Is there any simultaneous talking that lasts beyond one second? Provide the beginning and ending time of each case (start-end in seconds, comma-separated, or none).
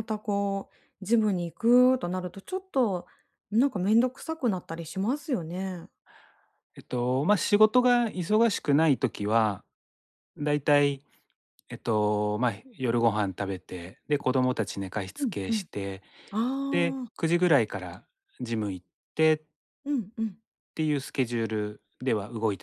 none